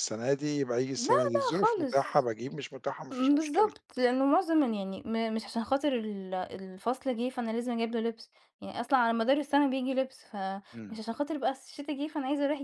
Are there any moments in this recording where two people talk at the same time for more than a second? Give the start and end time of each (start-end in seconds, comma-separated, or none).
0.9-2.3